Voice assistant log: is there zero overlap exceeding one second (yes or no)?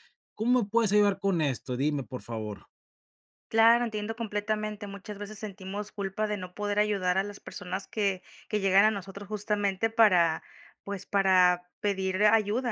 yes